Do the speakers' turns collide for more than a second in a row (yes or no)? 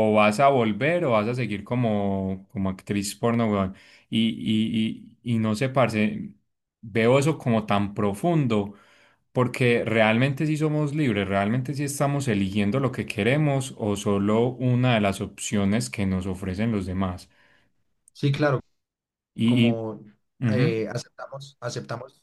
no